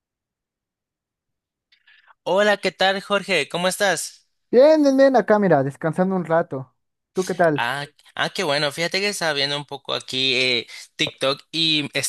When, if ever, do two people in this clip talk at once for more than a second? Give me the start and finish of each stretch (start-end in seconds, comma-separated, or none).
none